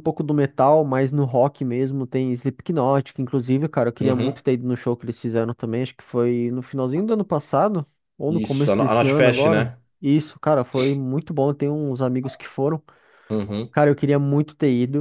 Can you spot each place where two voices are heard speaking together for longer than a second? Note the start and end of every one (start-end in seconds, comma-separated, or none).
8.3-9.8